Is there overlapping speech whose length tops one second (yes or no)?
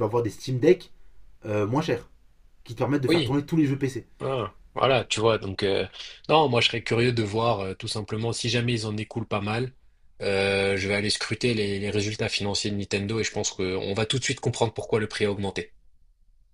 no